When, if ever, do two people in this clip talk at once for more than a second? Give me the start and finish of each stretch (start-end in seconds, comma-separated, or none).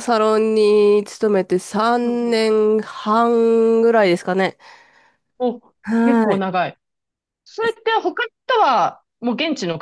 none